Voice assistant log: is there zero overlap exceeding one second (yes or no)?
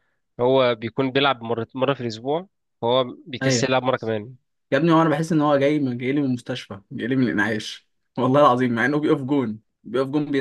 yes